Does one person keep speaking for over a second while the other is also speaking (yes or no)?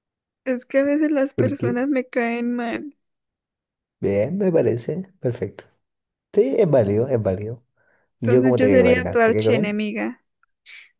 yes